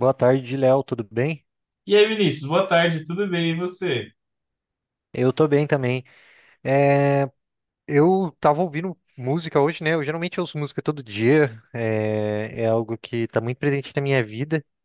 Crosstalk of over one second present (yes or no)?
no